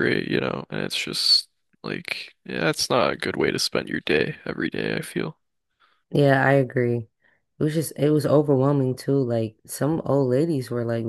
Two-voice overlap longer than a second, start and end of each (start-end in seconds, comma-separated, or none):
none